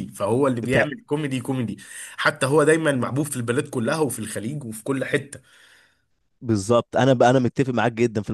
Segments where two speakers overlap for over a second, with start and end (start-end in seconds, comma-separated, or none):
none